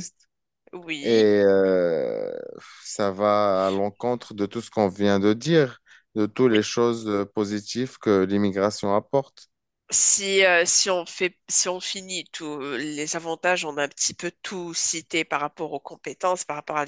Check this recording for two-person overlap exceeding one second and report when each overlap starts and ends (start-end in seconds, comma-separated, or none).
none